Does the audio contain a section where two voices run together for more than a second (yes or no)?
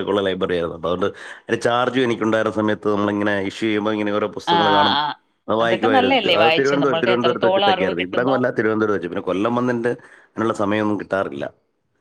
yes